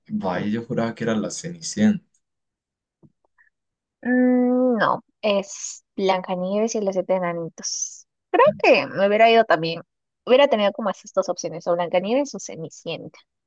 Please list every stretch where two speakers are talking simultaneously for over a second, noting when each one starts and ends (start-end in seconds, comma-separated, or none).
none